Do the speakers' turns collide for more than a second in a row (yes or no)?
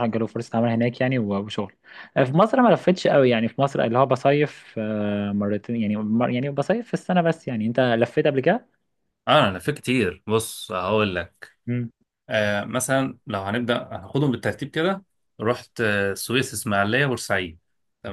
no